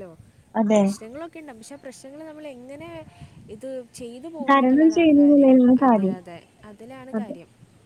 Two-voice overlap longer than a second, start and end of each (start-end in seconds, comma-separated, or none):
4.5-6.2